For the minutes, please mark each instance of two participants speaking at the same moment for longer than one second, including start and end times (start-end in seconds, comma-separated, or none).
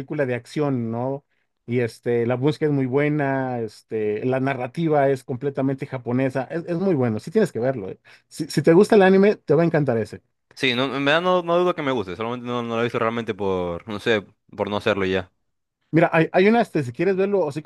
none